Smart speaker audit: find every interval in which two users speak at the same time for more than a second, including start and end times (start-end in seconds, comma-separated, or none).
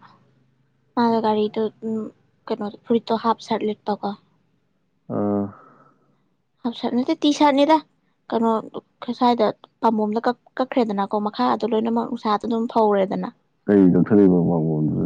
none